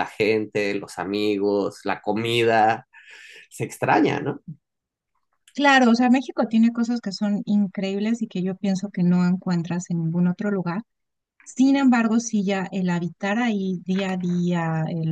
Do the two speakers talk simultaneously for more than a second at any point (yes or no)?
no